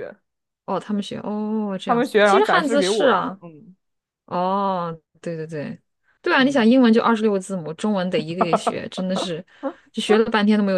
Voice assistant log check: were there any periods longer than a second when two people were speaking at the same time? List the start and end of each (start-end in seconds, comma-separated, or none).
1.8-3.4